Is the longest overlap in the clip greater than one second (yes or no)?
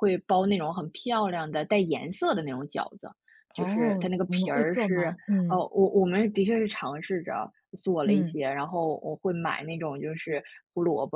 yes